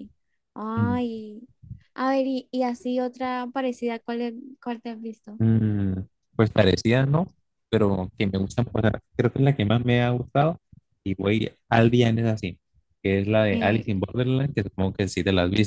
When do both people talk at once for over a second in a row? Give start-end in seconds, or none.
none